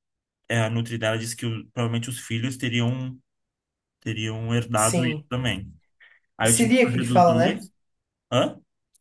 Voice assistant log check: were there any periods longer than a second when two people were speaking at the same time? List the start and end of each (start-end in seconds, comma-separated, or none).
6.5-7.7